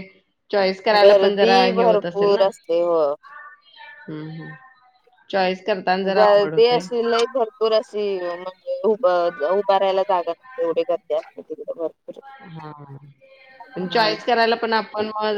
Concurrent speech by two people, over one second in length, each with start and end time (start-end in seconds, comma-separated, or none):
1.0-2.5